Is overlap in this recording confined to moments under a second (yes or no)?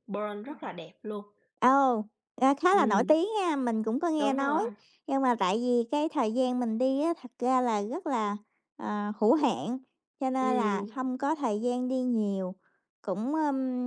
yes